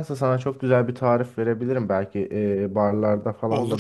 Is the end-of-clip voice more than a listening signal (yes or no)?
no